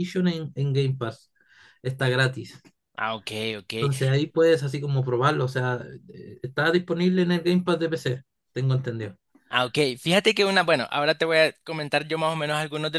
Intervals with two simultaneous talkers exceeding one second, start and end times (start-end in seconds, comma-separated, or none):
none